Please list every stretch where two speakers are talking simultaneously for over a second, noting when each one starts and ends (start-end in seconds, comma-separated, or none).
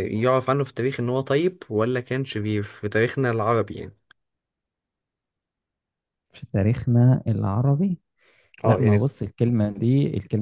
none